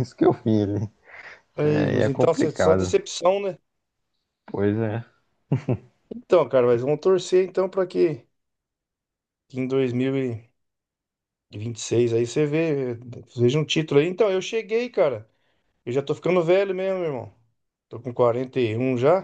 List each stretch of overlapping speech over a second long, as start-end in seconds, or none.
1.6-2.9